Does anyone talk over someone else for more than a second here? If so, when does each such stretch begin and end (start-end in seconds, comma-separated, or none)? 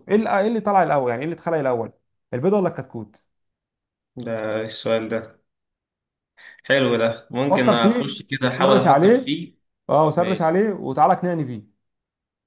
7.5-9.3